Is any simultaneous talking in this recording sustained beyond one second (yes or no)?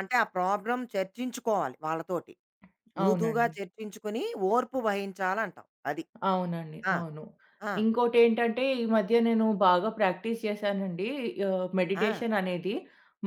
no